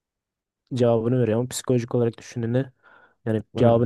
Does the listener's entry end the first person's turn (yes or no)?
no